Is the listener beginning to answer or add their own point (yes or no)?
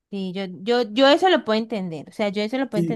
yes